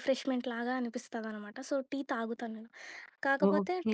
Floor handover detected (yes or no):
no